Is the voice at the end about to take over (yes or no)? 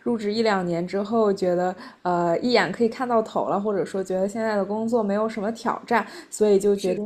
no